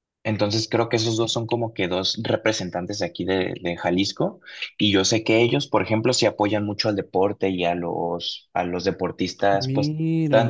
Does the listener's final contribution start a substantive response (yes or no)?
no